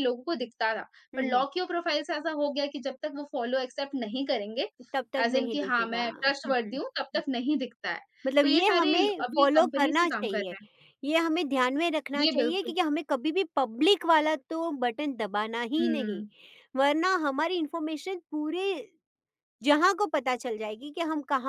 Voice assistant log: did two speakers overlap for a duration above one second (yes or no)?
yes